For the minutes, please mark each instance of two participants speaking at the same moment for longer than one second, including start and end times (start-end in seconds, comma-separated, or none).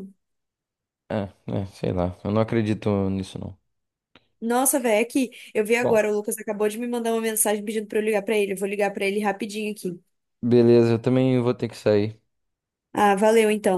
none